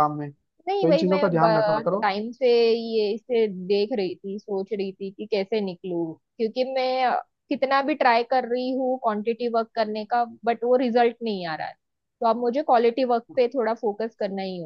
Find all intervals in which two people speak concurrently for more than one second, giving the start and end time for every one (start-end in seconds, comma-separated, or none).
0.7-2.1